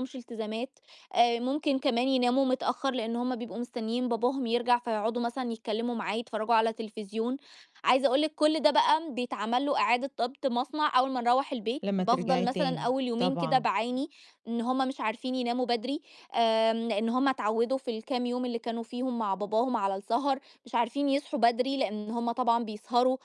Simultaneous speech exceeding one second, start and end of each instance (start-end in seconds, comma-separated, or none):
11.8-13.7